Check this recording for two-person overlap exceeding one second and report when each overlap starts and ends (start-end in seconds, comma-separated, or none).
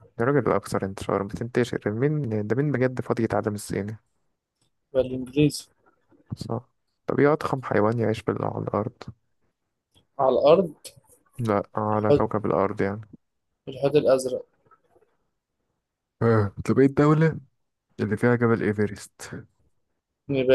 none